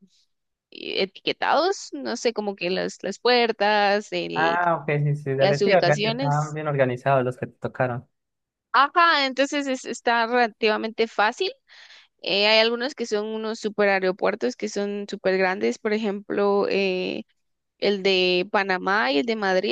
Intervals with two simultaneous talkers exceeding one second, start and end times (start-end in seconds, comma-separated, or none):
5.4-6.6